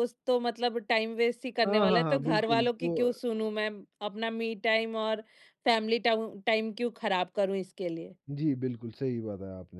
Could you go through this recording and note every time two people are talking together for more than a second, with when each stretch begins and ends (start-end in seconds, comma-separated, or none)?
1.6-3.1